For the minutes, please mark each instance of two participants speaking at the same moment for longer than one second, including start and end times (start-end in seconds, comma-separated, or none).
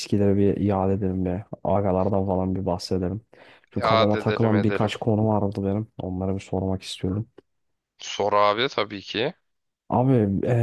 3.7-4.9